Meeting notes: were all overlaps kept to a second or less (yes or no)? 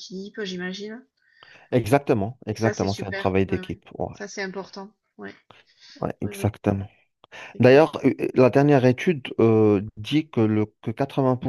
no